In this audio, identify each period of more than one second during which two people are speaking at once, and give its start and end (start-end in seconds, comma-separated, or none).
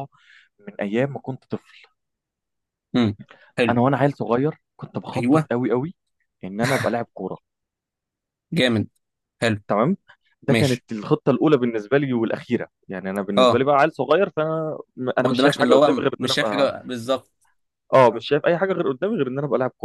15.2-16.7